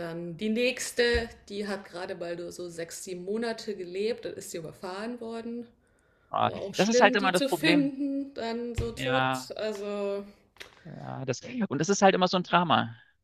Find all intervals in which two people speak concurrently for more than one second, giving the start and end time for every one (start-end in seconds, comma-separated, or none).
6.4-7.9